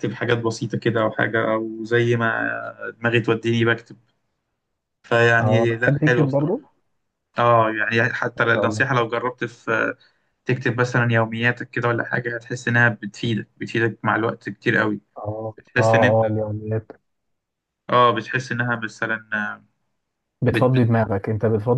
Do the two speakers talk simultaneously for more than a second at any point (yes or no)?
yes